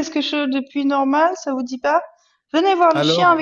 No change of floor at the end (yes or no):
yes